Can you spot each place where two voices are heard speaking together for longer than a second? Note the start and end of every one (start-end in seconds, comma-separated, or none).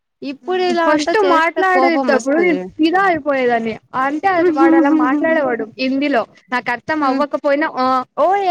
0.8-2.6